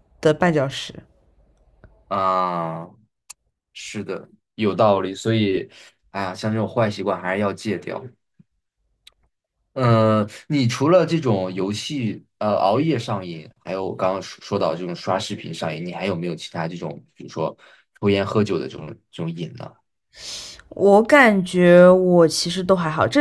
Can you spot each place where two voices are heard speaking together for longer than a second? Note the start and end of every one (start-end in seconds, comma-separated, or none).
none